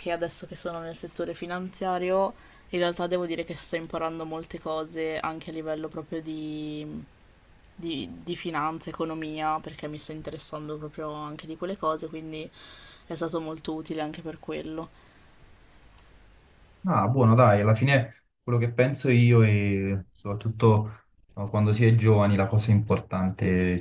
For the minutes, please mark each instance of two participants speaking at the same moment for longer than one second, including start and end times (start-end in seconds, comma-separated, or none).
none